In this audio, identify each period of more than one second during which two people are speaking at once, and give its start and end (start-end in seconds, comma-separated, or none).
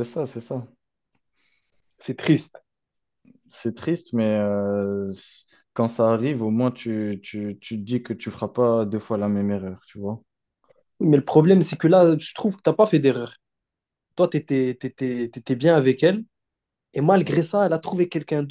none